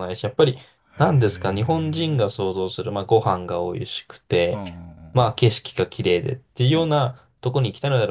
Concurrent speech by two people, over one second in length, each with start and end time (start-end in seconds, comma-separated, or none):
1.0-2.3